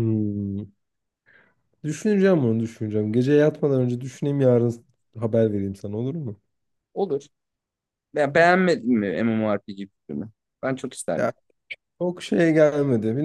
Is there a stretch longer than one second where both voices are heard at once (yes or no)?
no